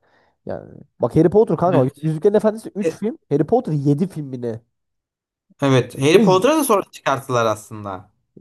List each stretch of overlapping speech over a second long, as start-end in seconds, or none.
none